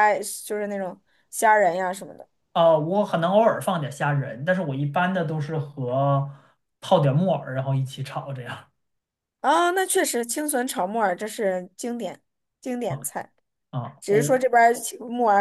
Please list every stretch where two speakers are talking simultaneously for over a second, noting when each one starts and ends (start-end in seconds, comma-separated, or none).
none